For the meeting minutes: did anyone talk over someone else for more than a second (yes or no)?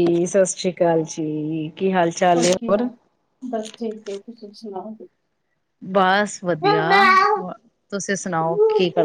no